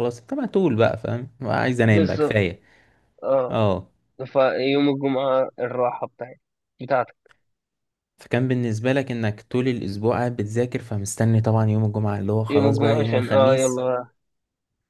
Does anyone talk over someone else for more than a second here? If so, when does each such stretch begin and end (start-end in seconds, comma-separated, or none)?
12.5-13.8